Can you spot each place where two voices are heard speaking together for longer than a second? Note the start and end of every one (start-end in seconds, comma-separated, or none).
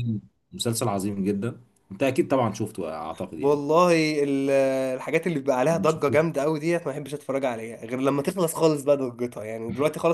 none